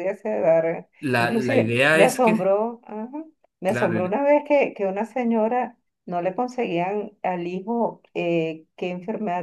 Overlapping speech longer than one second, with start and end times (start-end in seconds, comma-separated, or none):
1.0-2.5